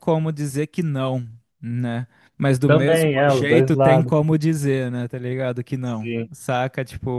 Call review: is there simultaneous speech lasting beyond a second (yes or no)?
yes